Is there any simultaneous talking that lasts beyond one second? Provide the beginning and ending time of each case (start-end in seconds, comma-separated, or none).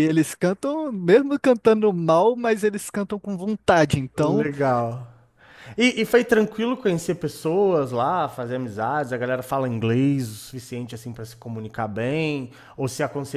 none